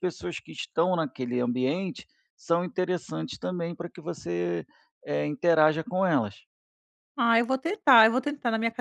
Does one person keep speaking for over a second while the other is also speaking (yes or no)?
no